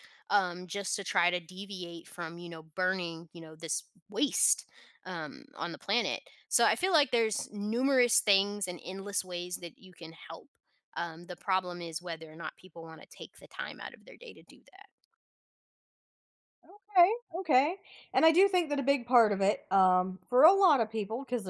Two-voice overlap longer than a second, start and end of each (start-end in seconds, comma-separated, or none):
none